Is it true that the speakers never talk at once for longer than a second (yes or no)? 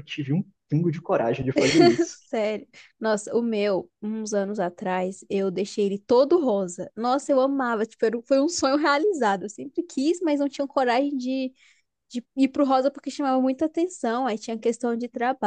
yes